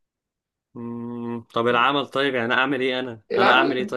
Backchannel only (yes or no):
no